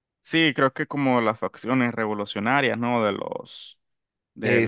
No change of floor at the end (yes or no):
no